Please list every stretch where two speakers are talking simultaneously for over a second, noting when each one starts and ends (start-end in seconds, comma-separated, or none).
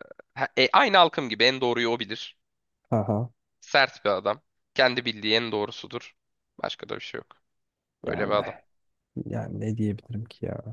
none